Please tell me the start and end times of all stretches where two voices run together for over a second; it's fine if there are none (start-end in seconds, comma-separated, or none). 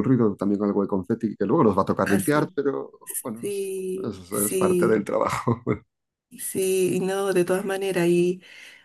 3.4-5.1